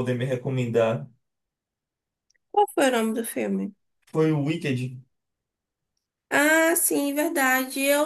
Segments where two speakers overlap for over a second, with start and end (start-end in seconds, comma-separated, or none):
none